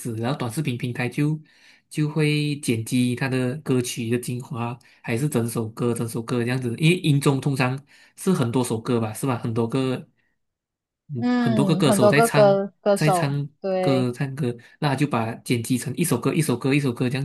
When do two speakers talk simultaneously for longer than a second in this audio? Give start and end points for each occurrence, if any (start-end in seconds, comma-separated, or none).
11.2-14.1